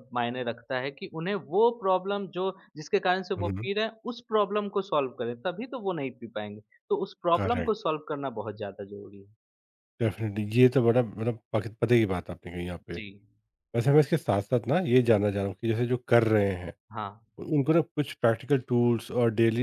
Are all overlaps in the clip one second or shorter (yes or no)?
yes